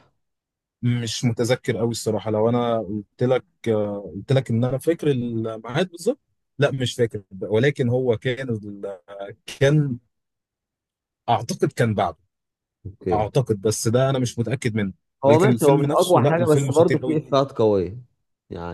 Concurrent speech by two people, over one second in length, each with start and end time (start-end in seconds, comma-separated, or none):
15.2-17.2